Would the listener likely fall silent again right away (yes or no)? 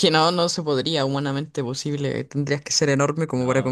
yes